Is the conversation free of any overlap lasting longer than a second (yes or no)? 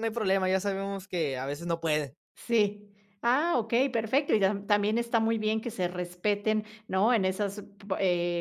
yes